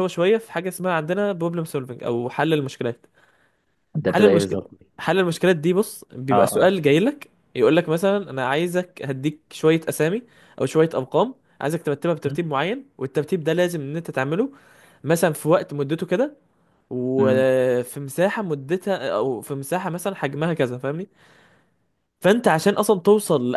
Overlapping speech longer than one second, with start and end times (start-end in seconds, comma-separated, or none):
none